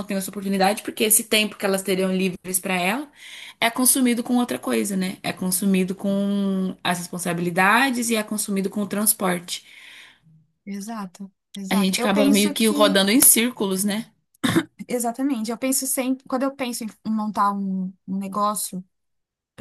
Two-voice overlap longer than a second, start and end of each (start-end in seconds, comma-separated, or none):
11.7-13.0